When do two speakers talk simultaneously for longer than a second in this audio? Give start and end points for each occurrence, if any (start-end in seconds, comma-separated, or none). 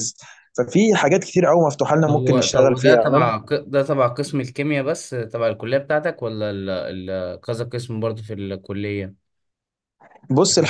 2.1-3.3